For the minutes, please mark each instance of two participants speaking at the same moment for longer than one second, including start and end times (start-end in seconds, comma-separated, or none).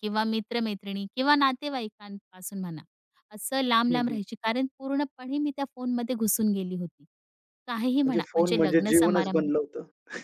8.0-9.5